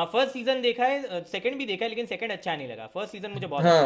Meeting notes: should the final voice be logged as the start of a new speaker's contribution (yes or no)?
yes